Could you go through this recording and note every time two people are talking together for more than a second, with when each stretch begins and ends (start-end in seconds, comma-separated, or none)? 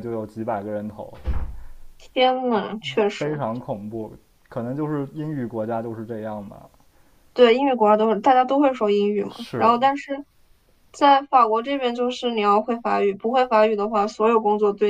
none